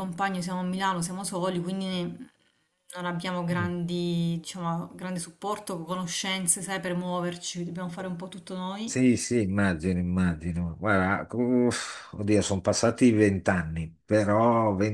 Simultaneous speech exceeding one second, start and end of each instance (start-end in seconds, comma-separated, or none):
none